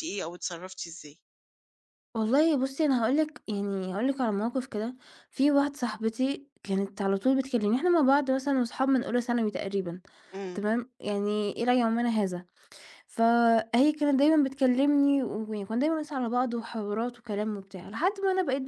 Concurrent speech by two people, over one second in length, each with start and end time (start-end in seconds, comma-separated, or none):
none